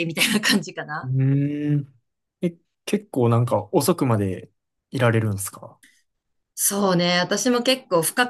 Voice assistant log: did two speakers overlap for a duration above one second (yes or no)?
no